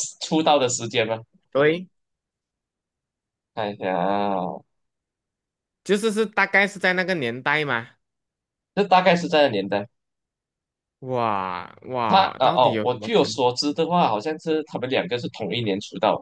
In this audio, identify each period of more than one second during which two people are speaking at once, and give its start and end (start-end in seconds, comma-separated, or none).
12.1-13.4